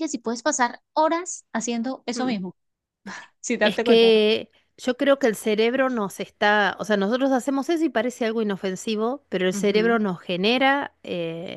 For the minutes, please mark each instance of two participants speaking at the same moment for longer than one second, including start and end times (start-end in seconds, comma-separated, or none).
none